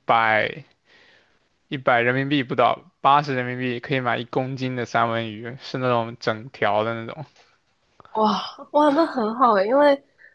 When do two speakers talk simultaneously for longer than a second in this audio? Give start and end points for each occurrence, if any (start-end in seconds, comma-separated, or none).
none